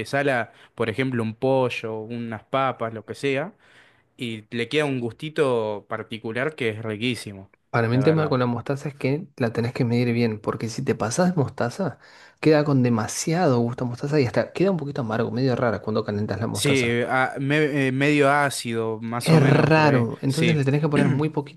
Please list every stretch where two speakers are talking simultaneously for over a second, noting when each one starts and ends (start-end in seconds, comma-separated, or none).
19.2-20.6